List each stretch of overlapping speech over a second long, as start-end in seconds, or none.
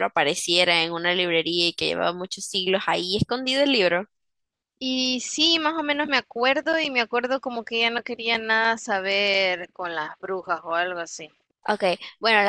none